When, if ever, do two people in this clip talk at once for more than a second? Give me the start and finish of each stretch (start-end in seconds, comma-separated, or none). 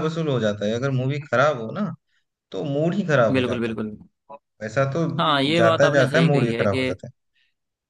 5.6-6.9